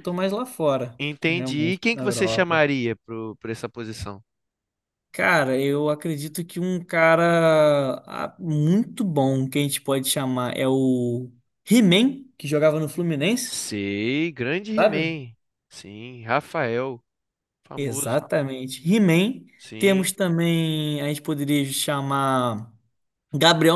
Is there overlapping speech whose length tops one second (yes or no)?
yes